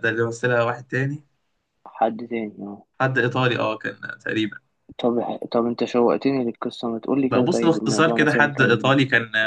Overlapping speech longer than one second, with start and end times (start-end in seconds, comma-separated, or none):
7.3-8.9